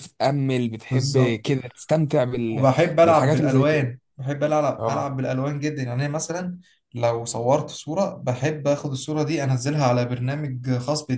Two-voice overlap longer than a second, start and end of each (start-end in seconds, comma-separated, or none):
2.5-3.8